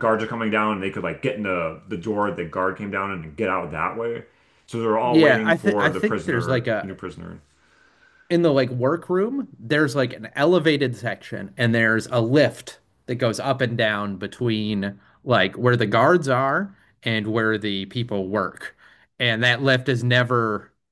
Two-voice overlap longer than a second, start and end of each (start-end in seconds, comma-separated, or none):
5.0-7.0